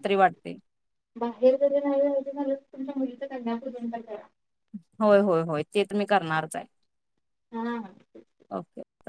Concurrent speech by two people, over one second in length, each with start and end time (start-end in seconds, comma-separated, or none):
none